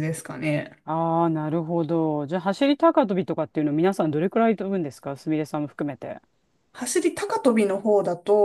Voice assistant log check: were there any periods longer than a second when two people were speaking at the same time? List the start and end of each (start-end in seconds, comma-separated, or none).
none